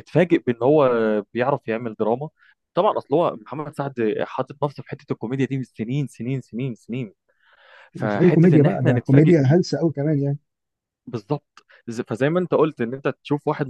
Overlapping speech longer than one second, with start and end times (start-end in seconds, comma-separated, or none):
7.9-9.6